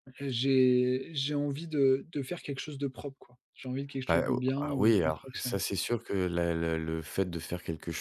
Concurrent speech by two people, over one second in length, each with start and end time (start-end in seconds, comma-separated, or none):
4.1-5.6